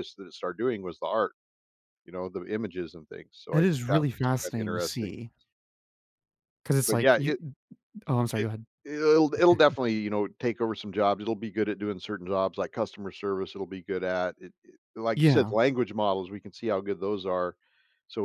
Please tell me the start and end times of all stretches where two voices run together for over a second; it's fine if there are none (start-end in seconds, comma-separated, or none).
3.5-5.1